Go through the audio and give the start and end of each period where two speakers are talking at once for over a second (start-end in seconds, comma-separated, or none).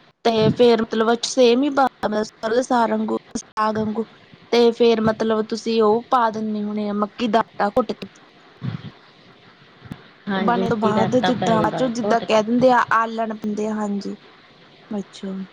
10.5-12.4